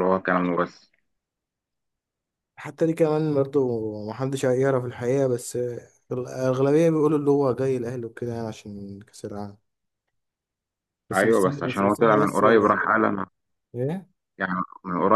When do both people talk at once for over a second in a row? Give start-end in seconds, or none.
11.1-12.4